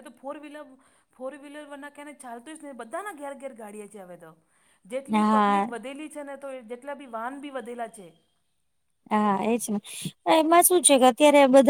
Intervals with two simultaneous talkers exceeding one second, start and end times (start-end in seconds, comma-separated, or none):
none